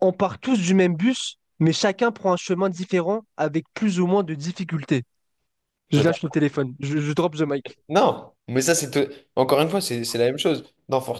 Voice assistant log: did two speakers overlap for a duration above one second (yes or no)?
no